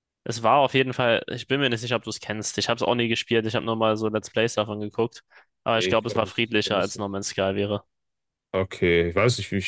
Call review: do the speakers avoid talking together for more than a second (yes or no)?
no